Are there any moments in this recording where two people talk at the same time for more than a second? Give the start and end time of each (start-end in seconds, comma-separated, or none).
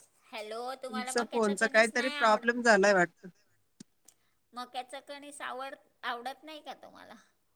0.9-2.5